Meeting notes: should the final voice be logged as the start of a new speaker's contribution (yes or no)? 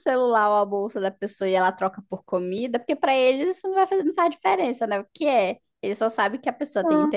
no